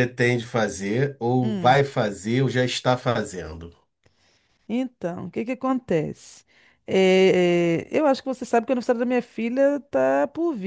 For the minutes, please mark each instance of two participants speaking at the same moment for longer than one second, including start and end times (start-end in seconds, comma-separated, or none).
none